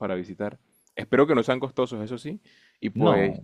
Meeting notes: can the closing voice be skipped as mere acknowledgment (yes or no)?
yes